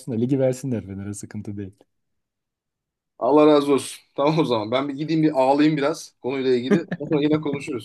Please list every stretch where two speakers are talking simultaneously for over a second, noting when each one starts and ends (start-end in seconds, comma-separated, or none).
none